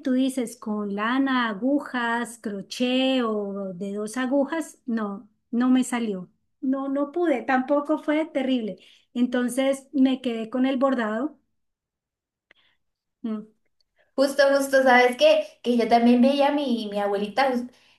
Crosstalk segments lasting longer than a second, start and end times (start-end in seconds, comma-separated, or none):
none